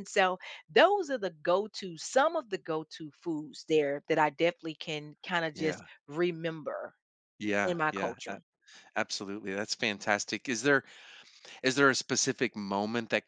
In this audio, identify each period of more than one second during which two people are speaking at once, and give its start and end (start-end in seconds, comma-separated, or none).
none